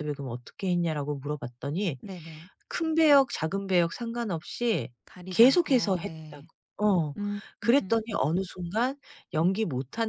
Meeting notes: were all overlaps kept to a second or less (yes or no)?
no